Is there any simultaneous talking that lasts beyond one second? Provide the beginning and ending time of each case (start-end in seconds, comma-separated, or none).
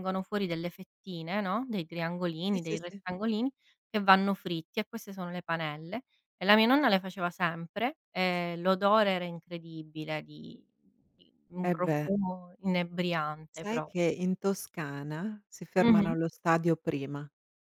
none